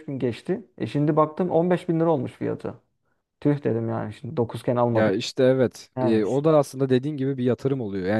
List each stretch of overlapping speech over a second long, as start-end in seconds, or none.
none